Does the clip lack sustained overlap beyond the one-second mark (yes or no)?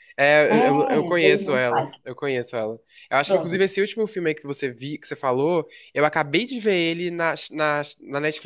no